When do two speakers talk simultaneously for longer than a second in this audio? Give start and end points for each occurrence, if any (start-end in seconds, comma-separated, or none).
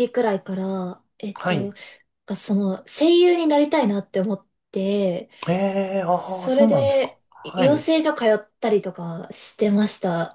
6.1-7.9